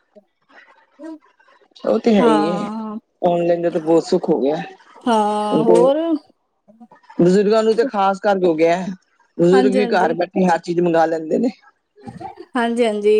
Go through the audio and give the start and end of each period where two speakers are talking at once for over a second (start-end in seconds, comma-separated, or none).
none